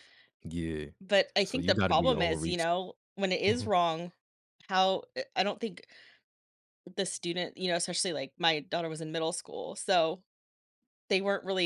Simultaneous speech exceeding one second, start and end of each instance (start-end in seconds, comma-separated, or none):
1.4-2.8